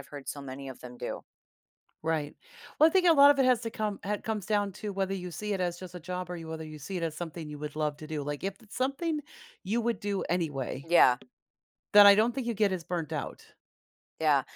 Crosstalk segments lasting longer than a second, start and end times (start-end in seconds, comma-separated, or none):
none